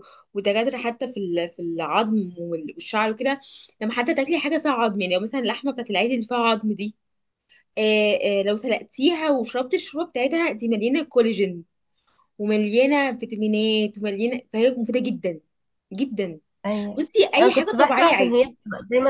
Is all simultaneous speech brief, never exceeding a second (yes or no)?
no